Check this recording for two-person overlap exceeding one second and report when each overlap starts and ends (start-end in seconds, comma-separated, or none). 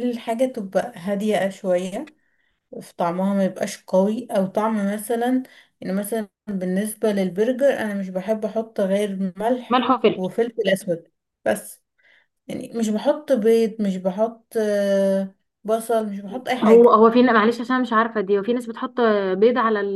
none